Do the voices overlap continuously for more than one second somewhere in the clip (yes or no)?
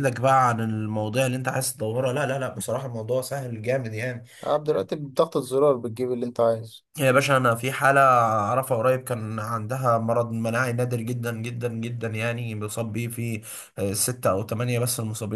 no